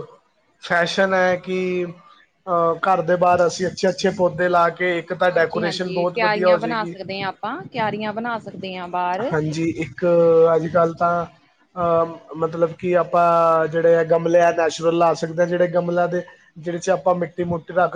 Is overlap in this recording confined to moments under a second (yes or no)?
no